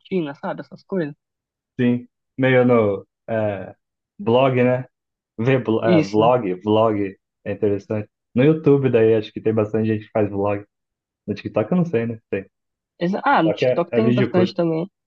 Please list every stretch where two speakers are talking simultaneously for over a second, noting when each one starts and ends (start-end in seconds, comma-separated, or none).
13.3-14.5